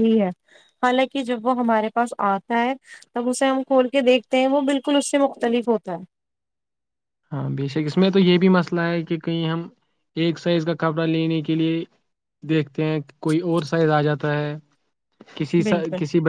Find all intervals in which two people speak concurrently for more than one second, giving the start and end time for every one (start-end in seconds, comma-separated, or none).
none